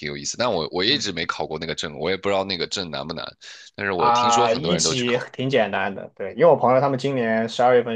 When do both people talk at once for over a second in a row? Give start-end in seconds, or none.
4.0-5.2